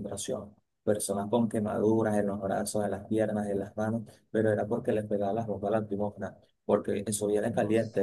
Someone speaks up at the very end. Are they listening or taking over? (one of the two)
listening